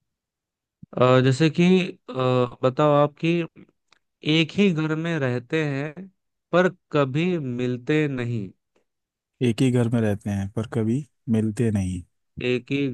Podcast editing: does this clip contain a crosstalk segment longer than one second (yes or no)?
no